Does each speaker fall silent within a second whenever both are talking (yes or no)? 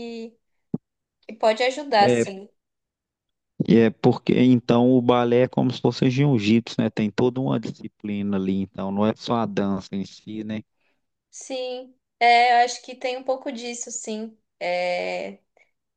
yes